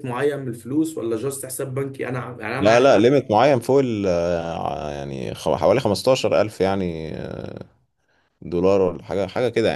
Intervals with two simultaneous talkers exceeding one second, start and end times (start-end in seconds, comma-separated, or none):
none